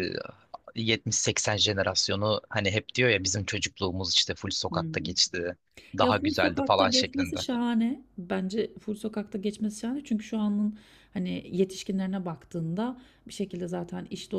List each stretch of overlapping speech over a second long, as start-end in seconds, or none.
6.0-7.5